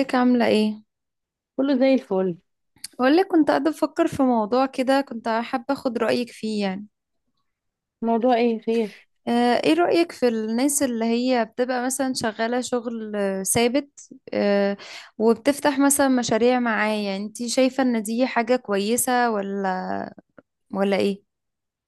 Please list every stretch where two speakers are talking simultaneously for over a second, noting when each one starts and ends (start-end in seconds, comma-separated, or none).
none